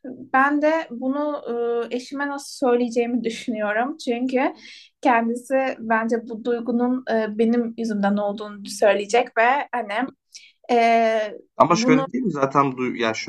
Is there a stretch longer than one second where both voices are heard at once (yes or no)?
no